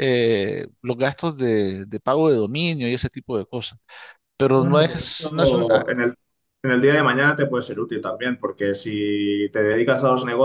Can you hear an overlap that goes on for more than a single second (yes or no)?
yes